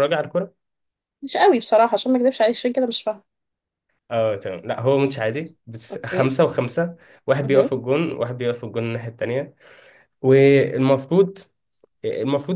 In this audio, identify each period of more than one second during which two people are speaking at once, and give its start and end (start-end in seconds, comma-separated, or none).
none